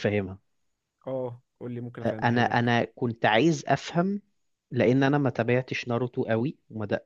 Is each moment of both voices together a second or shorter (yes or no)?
yes